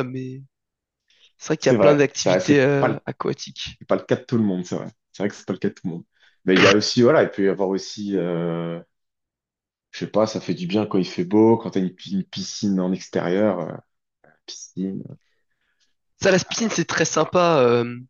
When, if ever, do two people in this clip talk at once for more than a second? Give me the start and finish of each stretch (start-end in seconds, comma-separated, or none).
1.6-3.0